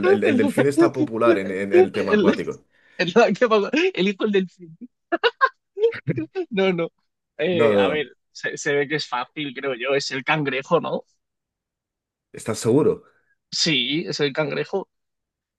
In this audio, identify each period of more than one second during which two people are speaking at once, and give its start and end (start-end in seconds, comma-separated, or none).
none